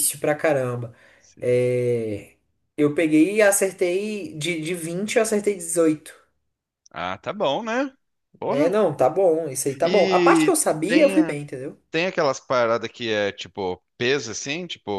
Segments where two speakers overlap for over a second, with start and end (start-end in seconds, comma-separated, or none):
9.8-11.3